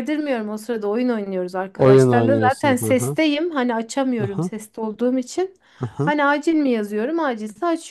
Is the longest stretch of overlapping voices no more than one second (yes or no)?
no